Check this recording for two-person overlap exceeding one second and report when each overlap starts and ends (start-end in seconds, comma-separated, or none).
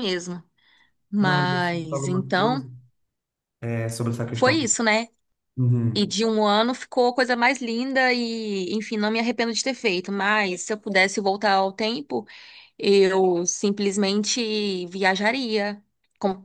1.2-2.6